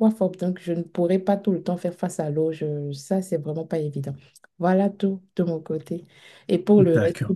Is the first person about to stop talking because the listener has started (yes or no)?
no